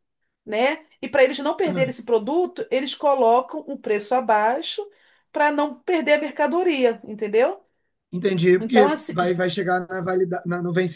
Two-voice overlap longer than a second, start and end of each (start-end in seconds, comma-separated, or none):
none